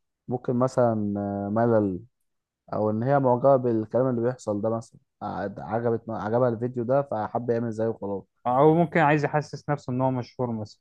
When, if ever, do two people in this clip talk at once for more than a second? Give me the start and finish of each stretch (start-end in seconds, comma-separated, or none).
none